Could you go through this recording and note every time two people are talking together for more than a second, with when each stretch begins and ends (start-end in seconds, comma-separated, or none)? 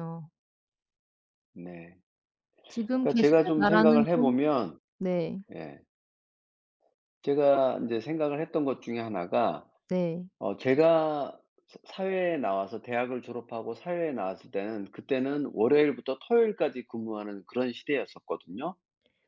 3.0-4.3